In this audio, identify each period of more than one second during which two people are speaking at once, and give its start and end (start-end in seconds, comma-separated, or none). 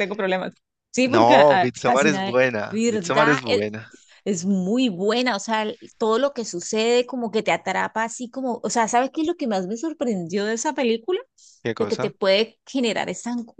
1.1-3.7